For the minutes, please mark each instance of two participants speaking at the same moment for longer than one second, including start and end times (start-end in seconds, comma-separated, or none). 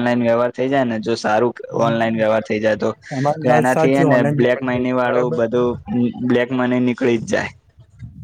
3.4-5.4